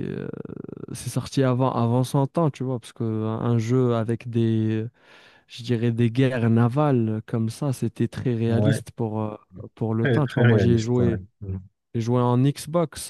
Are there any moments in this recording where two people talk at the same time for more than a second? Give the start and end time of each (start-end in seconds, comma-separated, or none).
10.0-11.2